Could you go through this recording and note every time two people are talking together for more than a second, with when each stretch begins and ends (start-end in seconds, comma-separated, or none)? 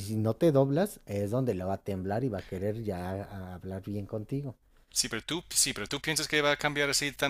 none